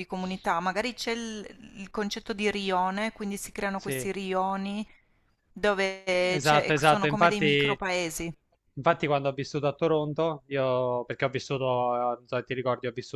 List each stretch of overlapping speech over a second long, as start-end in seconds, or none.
6.3-7.8